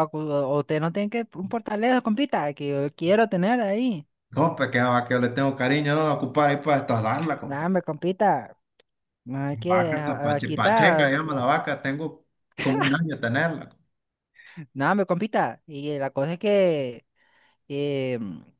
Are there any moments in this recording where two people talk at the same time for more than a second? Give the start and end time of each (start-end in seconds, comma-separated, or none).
9.7-11.2